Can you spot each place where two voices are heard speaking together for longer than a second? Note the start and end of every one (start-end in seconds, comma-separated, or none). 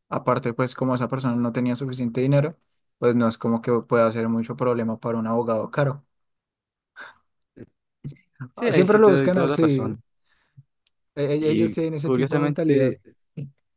8.6-10.0, 11.4-13.0